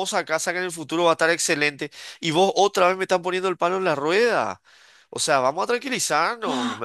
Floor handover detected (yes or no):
yes